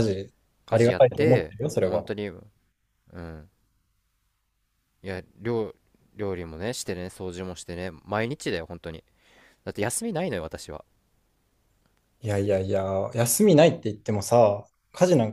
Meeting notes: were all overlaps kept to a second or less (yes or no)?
no